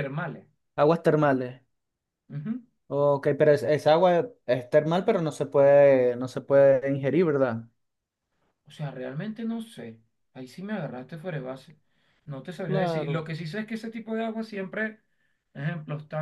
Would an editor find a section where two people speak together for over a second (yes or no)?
no